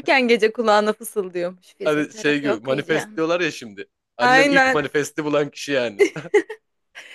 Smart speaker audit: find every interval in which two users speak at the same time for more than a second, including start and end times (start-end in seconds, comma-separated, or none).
1.8-3.2